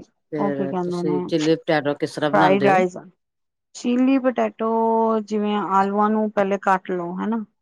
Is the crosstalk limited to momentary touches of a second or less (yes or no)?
yes